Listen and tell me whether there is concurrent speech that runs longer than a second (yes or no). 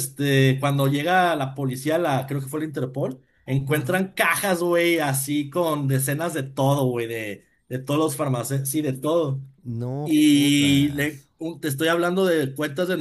yes